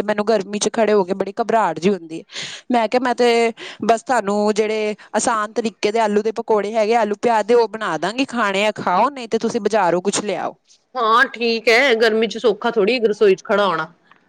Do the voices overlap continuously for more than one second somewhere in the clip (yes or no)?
no